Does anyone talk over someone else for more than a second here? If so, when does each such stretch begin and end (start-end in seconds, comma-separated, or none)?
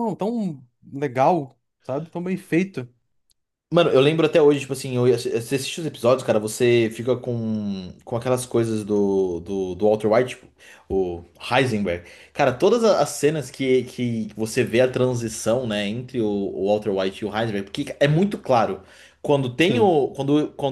none